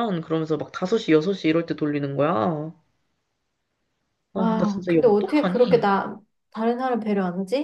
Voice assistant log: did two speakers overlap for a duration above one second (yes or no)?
yes